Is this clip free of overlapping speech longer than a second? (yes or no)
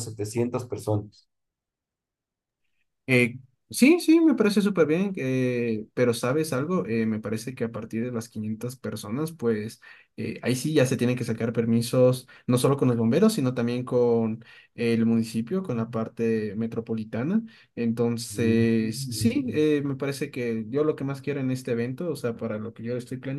no